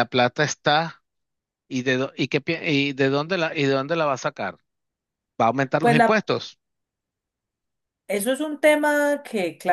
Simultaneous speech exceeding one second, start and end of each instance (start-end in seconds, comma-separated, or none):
none